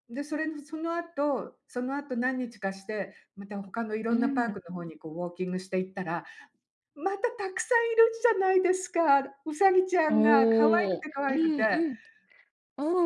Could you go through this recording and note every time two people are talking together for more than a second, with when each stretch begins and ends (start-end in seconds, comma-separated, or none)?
10.1-11.8